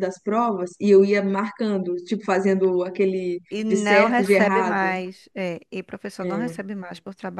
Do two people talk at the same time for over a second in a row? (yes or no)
yes